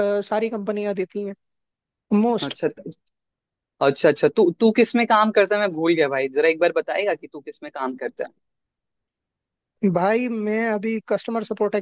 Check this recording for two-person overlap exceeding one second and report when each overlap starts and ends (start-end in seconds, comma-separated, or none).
none